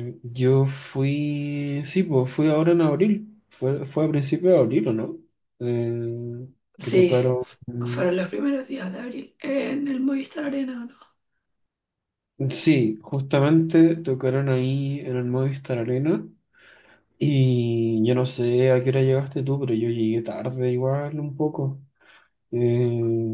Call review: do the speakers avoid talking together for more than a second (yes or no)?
yes